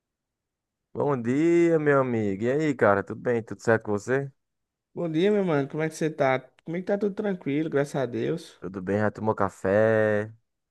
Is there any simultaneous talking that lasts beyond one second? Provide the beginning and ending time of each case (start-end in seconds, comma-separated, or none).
none